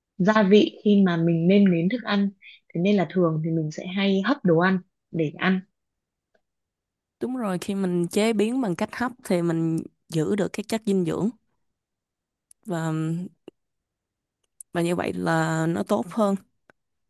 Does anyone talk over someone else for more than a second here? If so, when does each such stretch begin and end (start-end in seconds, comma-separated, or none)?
none